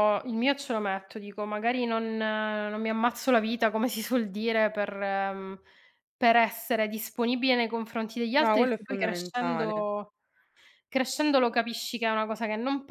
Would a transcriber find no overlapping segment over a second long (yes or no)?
no